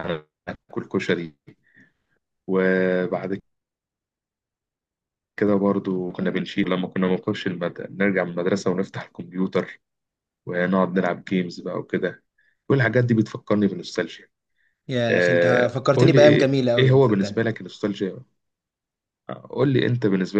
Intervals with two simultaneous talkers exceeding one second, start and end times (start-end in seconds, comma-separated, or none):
15.1-17.4